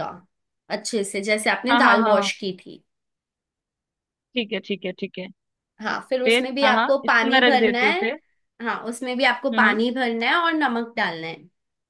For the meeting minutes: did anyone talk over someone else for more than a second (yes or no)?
yes